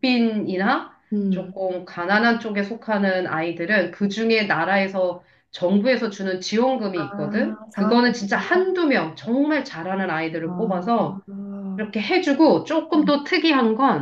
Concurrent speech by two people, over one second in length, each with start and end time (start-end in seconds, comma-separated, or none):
7.0-8.7